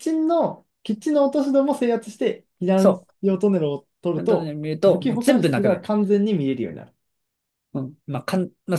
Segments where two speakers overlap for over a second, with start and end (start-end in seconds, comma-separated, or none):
4.1-5.9